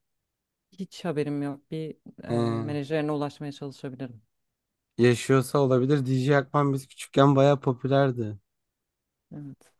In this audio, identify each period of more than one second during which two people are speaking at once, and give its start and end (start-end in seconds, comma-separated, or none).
none